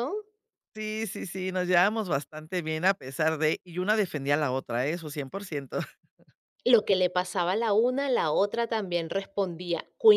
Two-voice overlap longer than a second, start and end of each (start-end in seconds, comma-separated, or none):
none